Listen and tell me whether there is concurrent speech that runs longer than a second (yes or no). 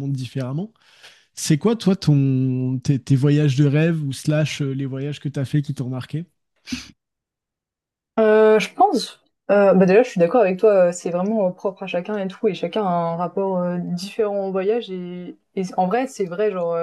no